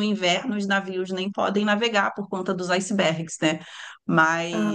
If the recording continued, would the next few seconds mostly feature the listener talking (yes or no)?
no